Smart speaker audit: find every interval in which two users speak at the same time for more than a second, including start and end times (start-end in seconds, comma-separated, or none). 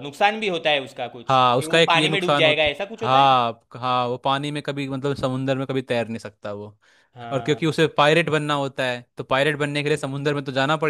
1.3-3.4